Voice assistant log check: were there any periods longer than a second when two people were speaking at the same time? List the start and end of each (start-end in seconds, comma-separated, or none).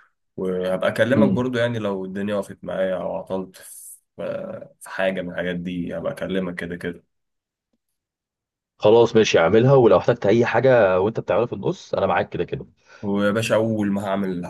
none